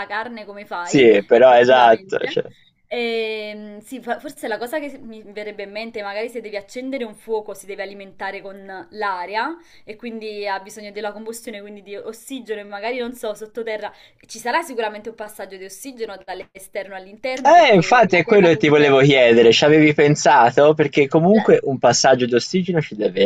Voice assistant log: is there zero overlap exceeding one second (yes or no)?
no